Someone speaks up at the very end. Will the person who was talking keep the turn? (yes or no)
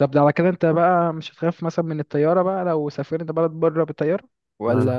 no